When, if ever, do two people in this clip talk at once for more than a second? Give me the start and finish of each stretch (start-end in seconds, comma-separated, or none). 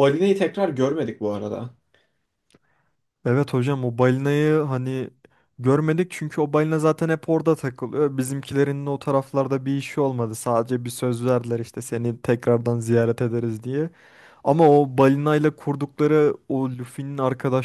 none